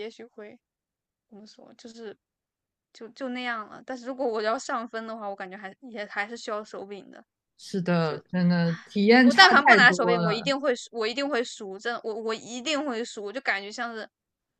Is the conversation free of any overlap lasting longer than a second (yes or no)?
no